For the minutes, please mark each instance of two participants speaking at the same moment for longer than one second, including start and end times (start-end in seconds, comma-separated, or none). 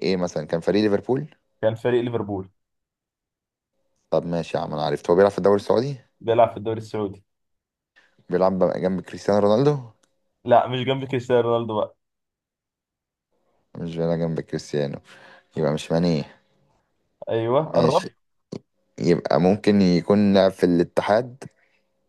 none